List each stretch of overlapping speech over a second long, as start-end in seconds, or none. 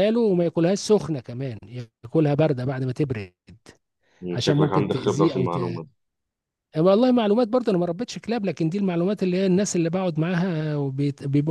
4.3-5.8